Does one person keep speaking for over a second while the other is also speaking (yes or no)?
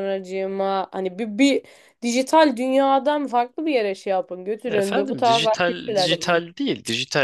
yes